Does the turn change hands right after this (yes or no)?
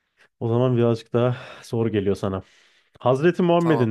no